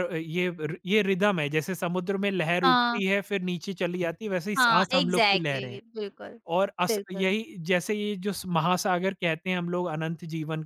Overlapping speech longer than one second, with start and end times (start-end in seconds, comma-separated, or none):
4.6-5.8